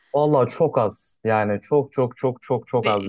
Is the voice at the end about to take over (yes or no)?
yes